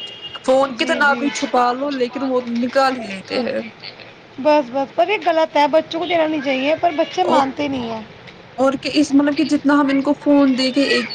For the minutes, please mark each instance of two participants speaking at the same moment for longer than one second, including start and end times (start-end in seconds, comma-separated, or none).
none